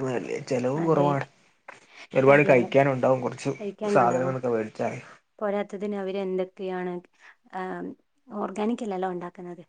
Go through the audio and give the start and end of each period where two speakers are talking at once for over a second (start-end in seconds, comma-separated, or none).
none